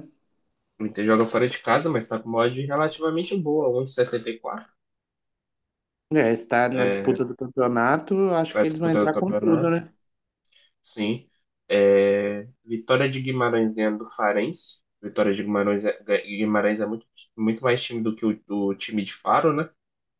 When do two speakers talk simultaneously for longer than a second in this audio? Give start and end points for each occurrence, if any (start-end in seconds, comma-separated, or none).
8.5-9.8